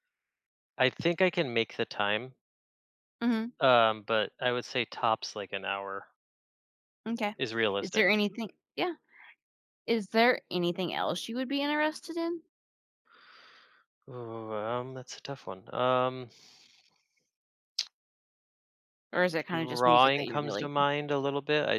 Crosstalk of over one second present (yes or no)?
yes